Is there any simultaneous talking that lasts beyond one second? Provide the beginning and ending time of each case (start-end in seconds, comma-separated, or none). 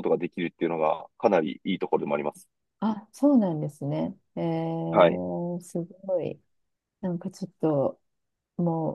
none